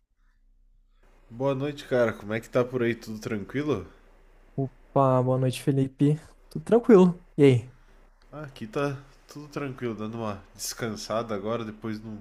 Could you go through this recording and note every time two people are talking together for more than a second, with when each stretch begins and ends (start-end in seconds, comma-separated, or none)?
none